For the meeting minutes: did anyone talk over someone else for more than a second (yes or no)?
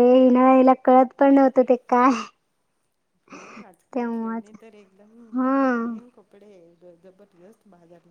no